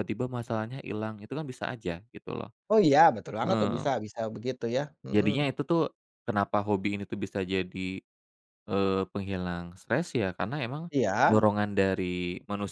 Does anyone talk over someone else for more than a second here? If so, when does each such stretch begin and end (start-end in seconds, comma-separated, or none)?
none